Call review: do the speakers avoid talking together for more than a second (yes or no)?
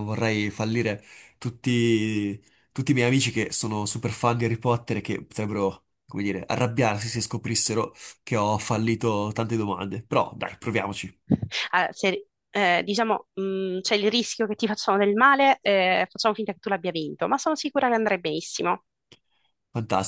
yes